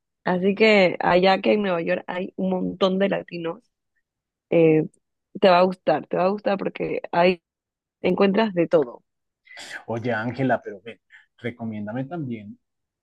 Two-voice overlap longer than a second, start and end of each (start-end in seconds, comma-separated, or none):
none